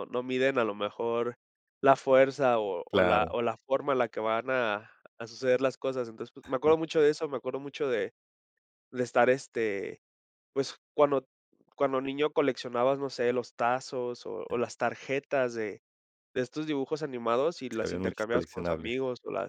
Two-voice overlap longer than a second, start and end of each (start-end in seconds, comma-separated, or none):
17.7-19.0